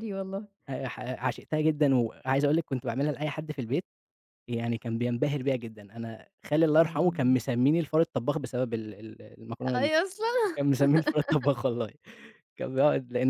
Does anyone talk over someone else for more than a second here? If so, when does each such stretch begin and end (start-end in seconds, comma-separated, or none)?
none